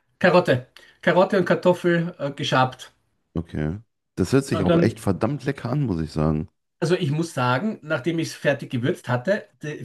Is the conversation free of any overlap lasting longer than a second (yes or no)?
yes